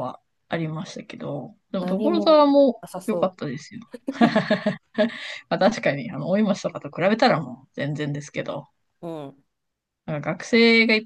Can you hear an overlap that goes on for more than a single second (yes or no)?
yes